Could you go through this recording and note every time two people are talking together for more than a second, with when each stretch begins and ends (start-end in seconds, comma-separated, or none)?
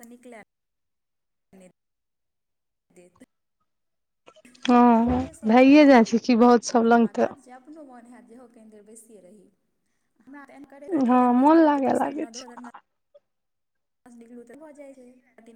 10.9-12.6